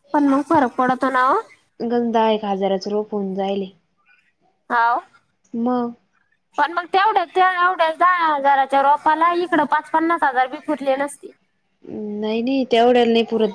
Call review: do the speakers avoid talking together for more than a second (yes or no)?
yes